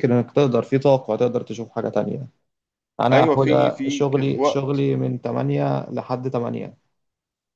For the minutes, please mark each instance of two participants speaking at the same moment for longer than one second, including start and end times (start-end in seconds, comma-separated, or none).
3.1-4.8